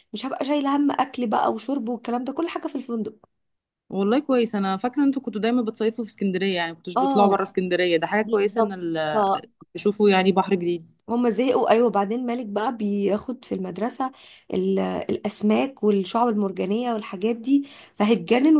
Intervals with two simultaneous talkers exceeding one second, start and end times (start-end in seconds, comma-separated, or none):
none